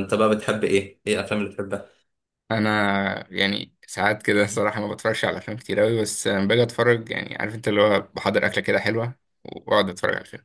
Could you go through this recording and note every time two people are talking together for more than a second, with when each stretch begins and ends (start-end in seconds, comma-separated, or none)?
none